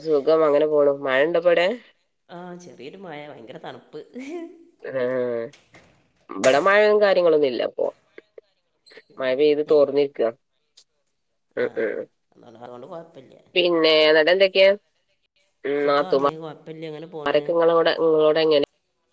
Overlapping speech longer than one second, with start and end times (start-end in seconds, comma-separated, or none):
15.8-17.4